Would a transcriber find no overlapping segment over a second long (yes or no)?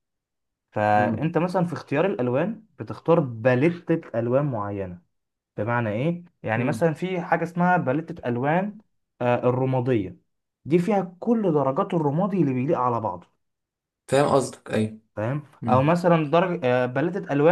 yes